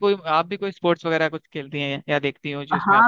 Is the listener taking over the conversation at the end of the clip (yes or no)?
yes